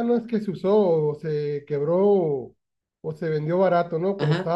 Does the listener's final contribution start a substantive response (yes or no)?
yes